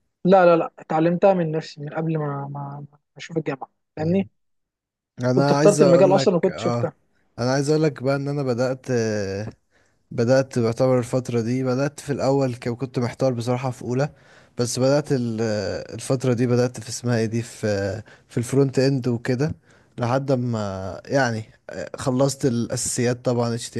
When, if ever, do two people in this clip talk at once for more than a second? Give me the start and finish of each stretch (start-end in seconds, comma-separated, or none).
5.4-6.9